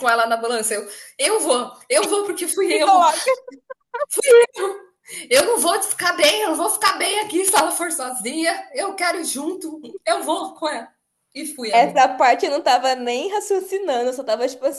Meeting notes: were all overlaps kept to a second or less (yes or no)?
yes